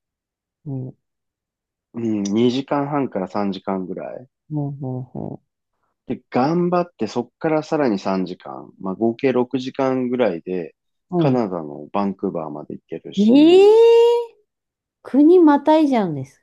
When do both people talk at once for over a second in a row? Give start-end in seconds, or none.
none